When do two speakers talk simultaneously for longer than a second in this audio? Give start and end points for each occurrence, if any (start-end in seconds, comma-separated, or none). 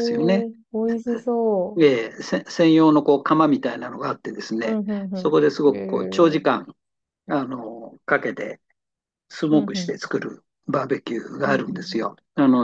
4.6-6.6